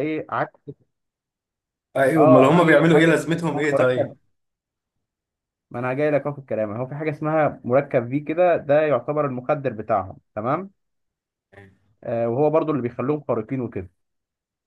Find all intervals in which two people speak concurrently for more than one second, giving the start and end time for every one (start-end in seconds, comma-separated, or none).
2.2-4.1